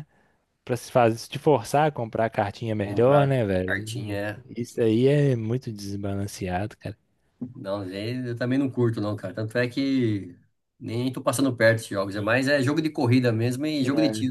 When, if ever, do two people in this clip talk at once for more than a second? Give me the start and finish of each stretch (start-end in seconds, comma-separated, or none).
2.8-4.2